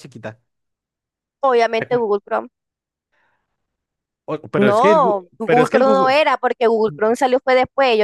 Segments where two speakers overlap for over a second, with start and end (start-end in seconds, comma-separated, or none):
4.6-6.2